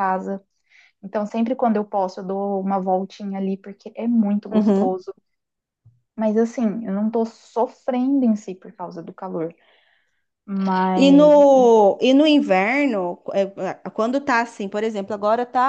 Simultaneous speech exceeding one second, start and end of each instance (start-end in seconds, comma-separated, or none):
none